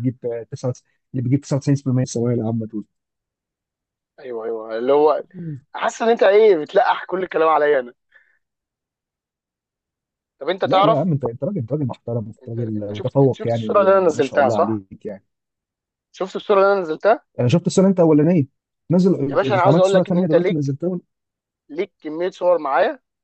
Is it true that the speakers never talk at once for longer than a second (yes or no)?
no